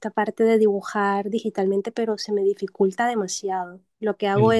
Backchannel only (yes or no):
yes